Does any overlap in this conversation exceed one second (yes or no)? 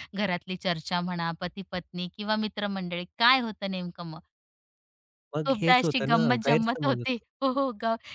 yes